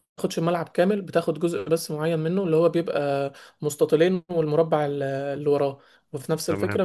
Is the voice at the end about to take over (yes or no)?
no